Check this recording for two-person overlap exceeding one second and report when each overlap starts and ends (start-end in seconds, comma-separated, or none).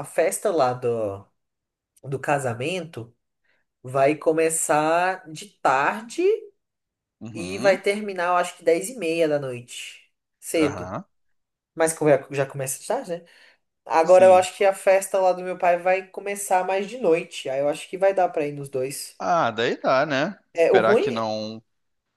none